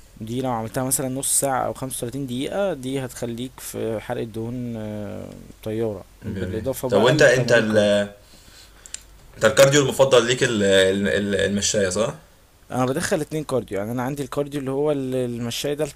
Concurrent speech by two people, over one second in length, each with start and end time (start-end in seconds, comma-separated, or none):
6.2-7.8